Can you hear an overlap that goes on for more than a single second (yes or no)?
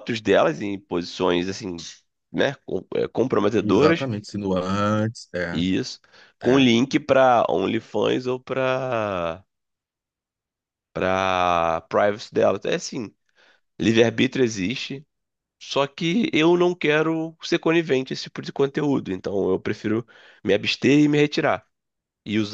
no